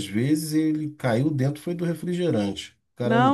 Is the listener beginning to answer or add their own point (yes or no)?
yes